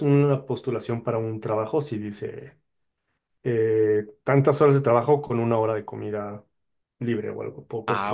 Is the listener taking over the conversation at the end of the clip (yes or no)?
yes